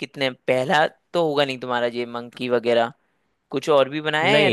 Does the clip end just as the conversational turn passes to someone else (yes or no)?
yes